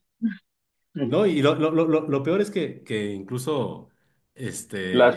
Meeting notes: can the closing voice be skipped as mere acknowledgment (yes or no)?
no